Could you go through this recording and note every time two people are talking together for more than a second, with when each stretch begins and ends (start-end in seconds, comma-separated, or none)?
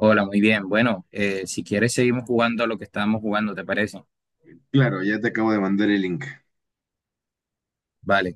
none